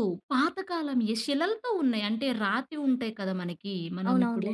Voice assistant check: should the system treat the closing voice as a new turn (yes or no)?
no